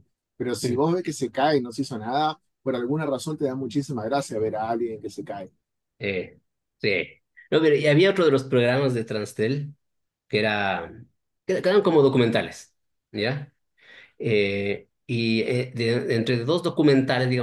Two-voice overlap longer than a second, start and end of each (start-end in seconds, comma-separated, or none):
none